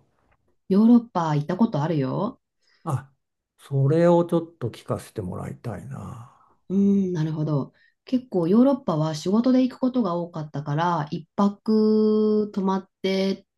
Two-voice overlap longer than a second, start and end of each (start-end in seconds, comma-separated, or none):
none